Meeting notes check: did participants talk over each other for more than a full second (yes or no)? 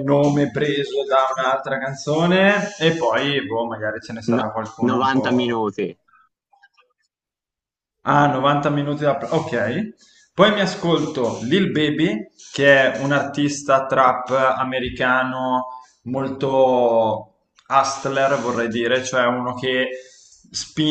yes